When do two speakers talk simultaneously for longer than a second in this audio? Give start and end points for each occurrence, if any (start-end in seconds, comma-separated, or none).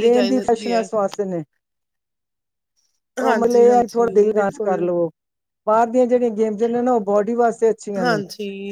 3.2-4.8